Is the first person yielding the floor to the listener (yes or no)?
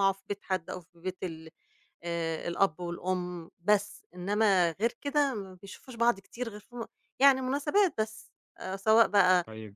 no